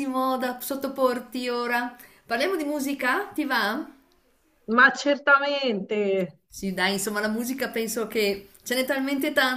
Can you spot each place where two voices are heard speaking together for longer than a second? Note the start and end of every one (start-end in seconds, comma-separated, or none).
none